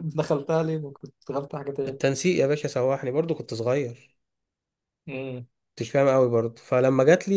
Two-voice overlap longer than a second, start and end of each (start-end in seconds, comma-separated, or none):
none